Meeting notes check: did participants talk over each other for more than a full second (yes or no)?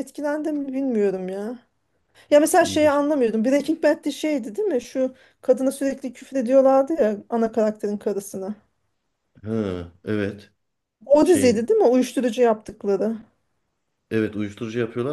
no